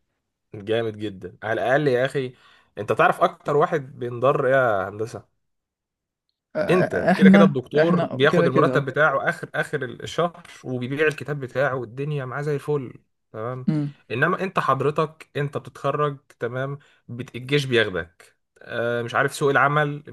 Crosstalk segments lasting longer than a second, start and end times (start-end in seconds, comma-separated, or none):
6.7-8.9